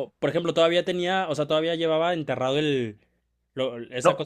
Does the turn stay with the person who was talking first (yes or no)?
yes